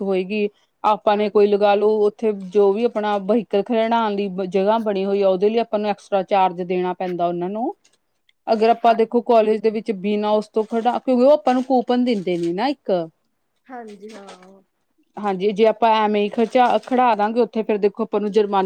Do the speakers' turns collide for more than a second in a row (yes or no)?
no